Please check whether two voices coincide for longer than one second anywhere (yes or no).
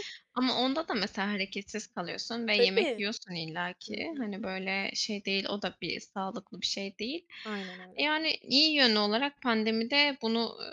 no